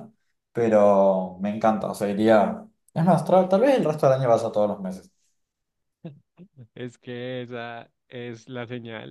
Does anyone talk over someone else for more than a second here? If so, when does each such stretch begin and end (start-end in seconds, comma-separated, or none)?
none